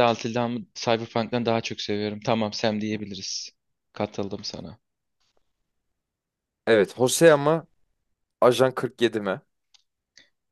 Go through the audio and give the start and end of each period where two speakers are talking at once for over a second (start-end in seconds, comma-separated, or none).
none